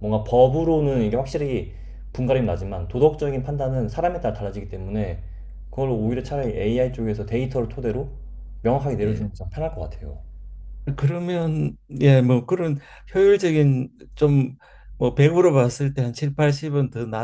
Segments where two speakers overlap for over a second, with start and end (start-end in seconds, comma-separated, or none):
none